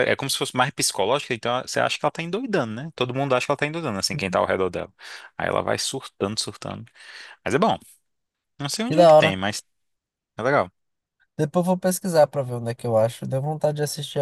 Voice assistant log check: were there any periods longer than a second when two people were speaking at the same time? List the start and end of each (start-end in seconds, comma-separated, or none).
none